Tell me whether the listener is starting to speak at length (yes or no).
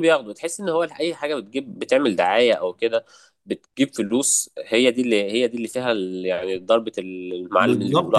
yes